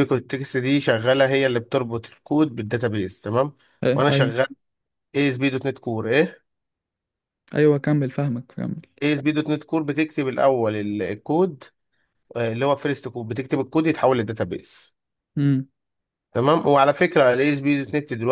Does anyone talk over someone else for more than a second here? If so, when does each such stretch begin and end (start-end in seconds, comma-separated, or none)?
none